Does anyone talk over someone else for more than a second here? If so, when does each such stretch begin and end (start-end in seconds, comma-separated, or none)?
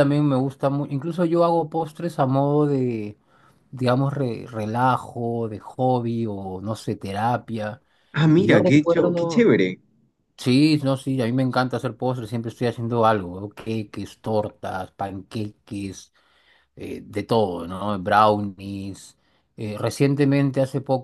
8.3-9.6